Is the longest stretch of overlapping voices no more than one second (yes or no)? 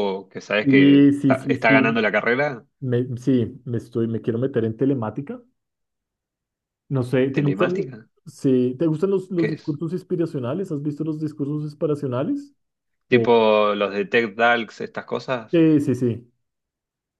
no